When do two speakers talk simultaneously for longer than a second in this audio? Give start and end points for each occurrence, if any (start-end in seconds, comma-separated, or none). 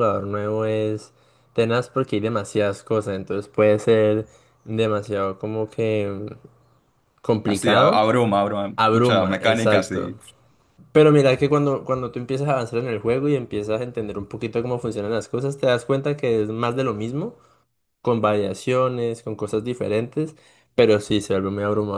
8.8-10.1